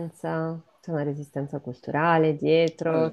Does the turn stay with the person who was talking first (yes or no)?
no